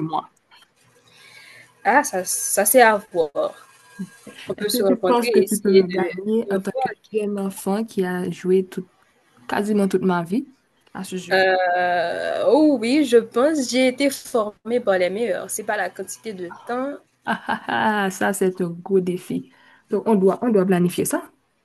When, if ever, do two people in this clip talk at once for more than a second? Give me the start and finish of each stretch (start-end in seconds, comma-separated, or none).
4.6-6.9